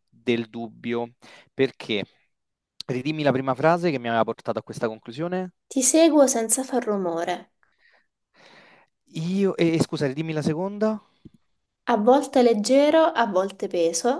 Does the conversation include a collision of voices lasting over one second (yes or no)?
no